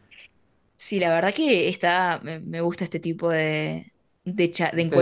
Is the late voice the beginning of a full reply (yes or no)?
no